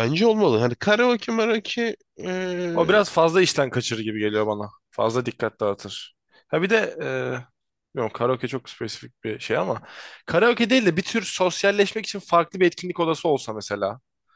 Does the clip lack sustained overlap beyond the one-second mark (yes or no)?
yes